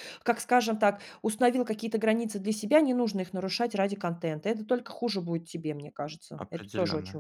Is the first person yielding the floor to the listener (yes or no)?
yes